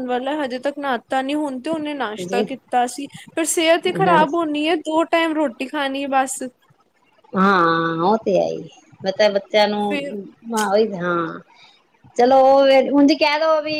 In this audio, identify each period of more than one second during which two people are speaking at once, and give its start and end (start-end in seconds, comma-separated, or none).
none